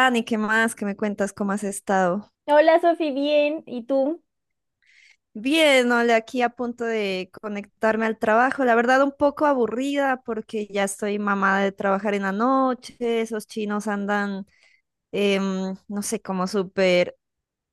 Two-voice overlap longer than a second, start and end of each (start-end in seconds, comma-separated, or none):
none